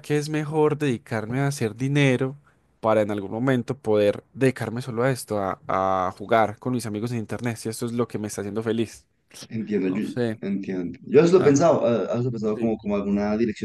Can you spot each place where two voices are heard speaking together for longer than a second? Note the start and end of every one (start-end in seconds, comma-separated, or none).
none